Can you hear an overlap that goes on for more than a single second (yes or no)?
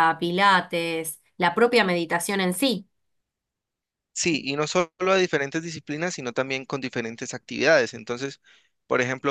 no